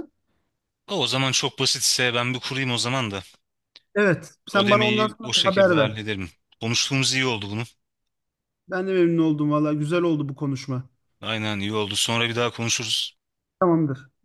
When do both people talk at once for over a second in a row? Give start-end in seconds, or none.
4.5-6.0